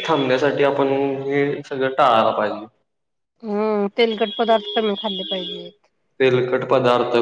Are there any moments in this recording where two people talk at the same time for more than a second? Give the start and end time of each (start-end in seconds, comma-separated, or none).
none